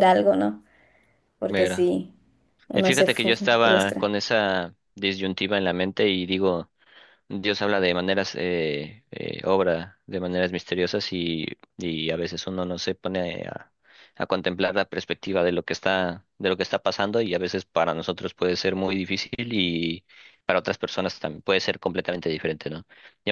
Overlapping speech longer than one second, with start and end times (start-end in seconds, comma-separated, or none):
2.7-4.1